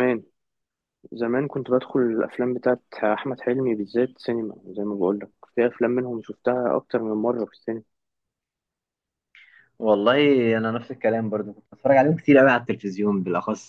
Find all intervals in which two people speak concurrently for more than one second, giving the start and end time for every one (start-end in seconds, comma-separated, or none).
none